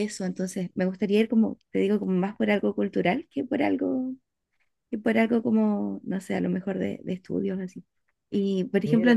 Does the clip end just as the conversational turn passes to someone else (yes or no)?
no